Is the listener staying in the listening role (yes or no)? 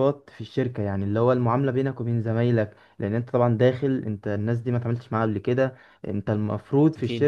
yes